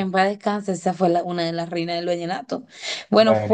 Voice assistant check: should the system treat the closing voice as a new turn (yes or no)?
no